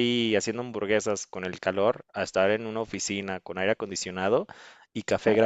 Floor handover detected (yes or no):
no